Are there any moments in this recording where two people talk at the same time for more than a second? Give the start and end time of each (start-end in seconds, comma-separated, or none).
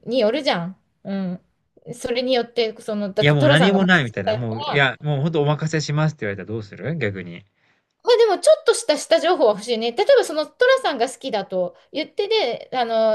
3.2-5.0